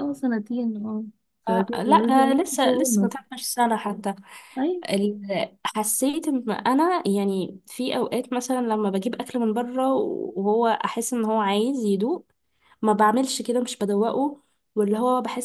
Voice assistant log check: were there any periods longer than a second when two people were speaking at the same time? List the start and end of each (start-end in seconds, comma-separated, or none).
1.5-3.1